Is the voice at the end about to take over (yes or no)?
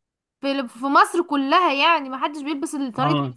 no